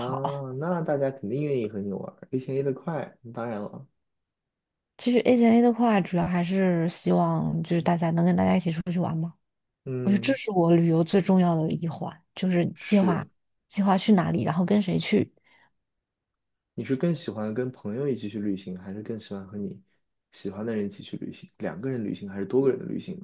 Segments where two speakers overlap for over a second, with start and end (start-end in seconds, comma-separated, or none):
none